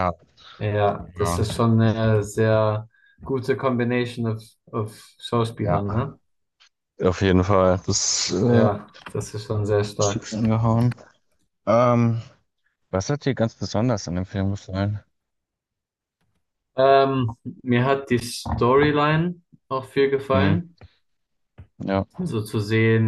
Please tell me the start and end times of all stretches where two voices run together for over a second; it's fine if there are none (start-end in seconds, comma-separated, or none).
none